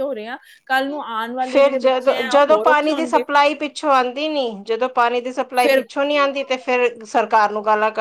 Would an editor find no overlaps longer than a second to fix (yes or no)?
no